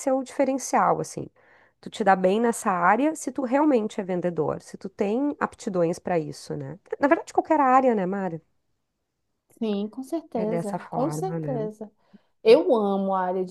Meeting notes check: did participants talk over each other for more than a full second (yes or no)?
yes